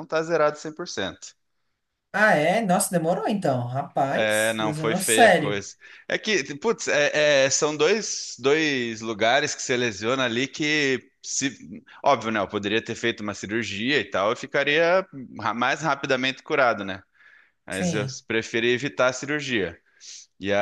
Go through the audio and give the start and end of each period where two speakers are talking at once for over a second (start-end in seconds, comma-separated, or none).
4.1-5.6